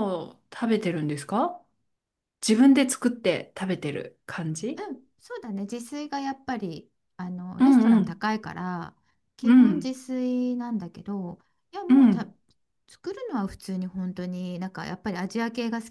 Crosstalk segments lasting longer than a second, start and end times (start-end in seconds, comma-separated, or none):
none